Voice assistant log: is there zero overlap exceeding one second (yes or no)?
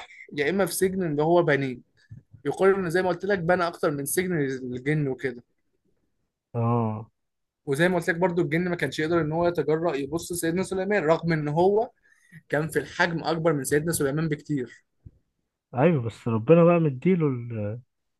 yes